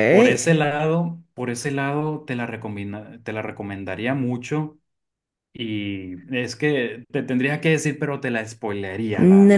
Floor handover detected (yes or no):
yes